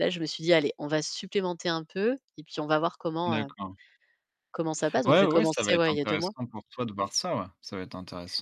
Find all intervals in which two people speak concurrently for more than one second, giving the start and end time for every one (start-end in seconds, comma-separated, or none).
5.0-6.3